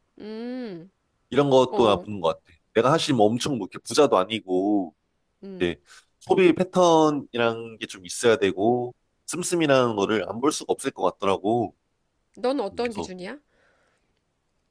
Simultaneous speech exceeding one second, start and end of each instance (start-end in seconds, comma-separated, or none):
none